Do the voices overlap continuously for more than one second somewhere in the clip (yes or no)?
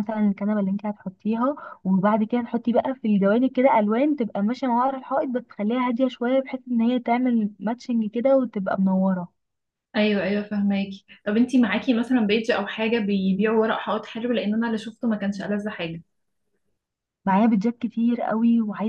no